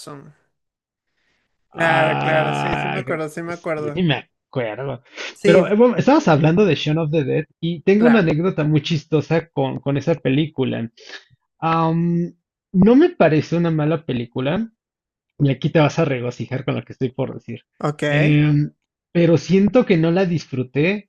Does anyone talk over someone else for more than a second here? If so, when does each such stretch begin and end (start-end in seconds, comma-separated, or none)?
1.7-3.0